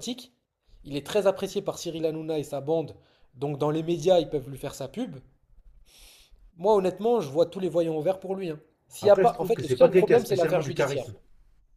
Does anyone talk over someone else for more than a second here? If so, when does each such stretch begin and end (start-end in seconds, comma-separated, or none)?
9.0-11.1